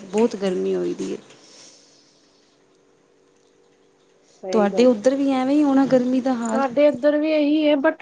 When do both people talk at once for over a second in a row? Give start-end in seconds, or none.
none